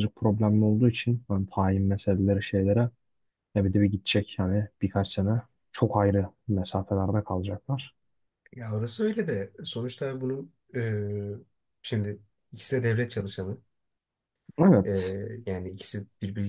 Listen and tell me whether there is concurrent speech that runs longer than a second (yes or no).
no